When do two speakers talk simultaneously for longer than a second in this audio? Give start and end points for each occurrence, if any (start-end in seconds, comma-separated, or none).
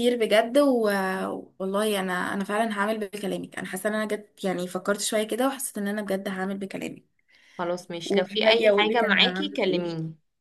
8.0-9.8